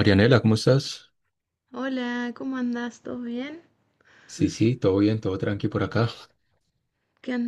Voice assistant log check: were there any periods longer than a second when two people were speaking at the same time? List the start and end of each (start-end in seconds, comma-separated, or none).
none